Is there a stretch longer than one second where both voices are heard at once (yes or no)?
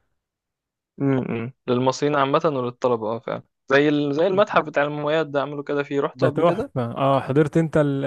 no